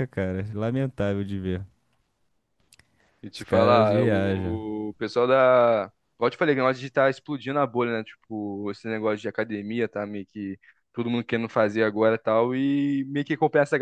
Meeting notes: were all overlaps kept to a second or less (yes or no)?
no